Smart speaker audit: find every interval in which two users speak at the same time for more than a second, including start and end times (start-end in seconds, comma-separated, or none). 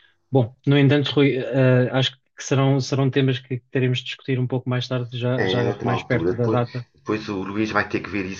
5.4-6.8